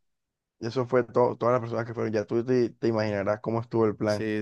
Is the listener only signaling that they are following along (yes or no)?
no